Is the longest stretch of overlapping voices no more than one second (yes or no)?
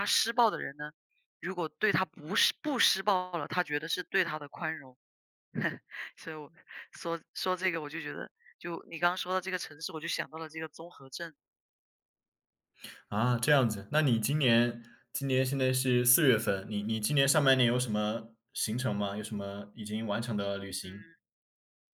yes